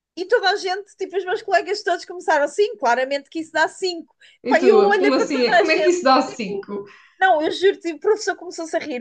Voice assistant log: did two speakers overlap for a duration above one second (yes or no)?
yes